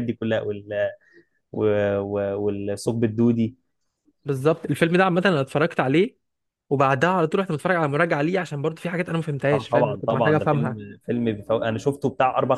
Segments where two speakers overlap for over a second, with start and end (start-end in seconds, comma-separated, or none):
9.5-10.8